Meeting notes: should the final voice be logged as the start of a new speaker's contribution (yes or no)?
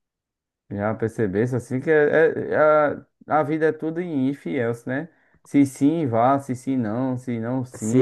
yes